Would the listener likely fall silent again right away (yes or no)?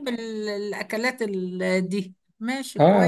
no